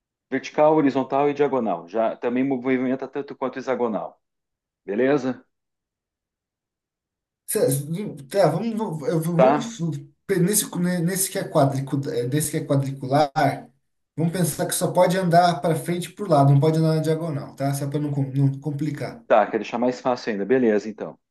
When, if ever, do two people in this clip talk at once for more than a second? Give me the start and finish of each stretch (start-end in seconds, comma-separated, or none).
none